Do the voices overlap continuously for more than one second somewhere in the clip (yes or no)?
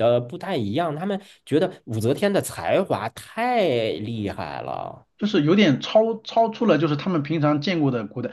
no